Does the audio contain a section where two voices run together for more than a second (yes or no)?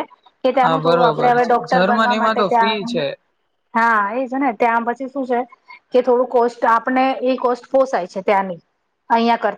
yes